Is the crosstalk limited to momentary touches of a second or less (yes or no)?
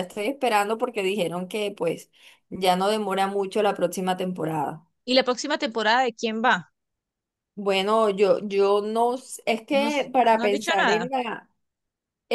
no